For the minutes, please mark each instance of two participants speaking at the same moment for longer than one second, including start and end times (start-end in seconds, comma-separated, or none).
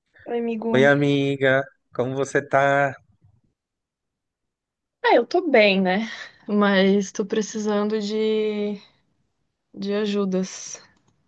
none